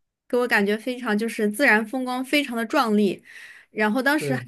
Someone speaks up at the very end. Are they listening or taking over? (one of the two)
listening